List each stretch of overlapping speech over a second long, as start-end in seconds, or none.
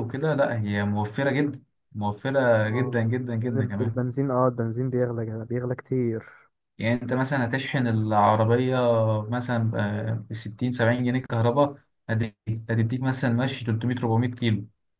2.6-4.0